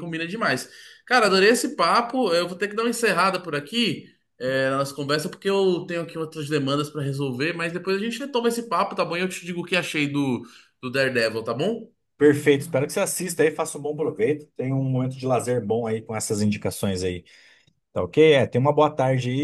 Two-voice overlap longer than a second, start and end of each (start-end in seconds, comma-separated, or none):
none